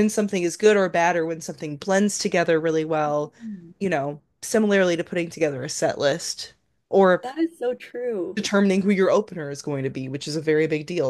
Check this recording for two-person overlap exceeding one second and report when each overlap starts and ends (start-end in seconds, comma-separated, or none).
none